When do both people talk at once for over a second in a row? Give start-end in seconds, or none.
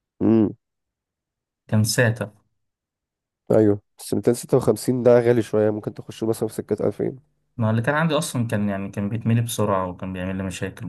none